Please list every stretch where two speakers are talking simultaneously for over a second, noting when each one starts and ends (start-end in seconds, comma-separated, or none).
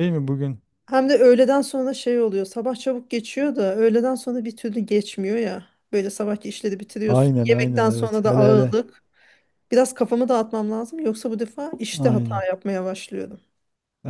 7.0-8.8